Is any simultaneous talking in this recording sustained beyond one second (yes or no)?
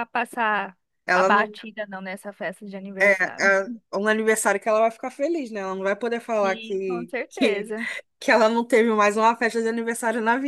yes